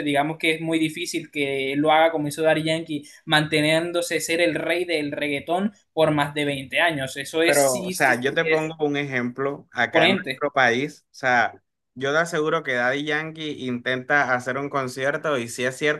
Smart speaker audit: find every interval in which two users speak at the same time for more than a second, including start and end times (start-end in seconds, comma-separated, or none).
7.4-8.7